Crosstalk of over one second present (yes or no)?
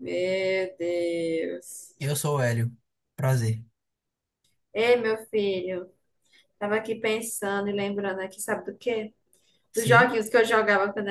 no